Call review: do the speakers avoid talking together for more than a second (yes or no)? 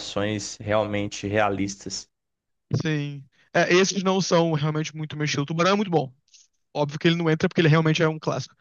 yes